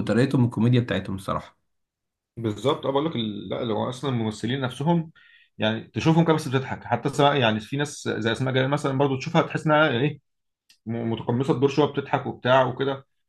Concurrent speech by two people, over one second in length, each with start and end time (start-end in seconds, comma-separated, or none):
none